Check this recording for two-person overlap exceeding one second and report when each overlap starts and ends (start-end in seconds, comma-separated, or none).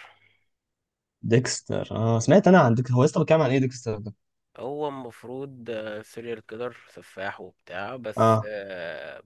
none